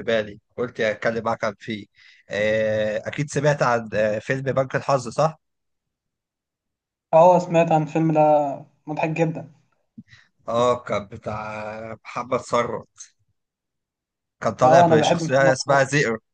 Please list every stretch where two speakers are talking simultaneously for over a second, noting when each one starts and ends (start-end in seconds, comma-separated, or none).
14.6-15.8